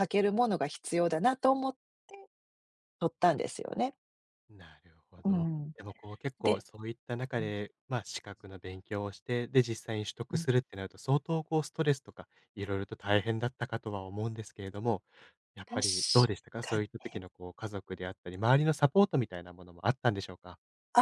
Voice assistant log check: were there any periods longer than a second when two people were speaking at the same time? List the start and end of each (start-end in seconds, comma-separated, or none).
none